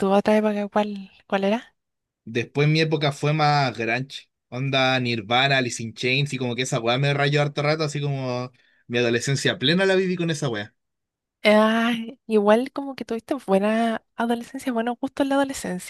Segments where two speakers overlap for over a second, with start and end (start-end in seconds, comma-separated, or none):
none